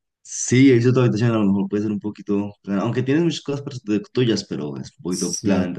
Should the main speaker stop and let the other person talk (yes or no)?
yes